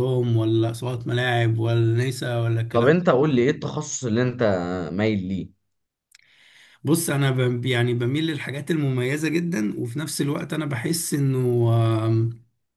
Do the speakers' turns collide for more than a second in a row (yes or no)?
no